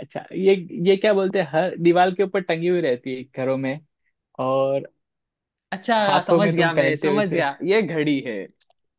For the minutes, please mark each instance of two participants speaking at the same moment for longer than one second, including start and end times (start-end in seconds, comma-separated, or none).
6.0-7.4